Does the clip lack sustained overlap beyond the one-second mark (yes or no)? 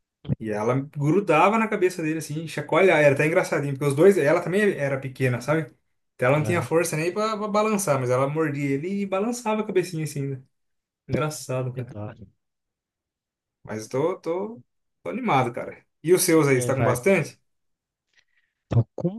yes